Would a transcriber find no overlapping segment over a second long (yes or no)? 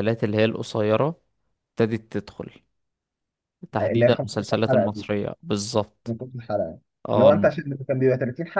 no